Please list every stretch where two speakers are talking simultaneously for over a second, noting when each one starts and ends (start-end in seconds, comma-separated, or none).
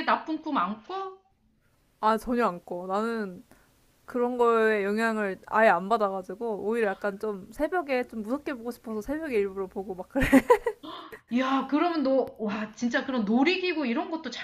none